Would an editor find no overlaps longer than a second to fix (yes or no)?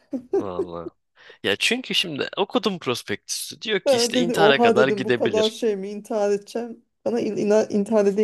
no